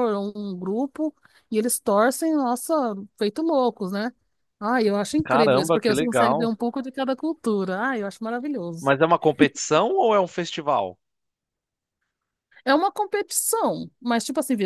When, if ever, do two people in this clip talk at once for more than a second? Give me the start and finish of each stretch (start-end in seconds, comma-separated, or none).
5.2-6.5